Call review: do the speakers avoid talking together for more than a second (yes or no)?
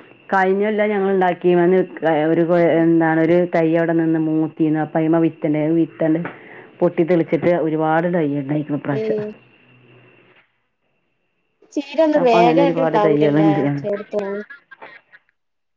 no